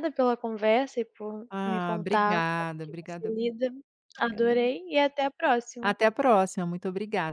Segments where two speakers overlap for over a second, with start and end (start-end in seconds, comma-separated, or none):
1.5-3.3